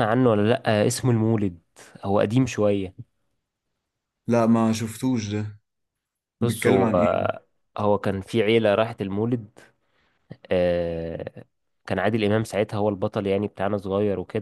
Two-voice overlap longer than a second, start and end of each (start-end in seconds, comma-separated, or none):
none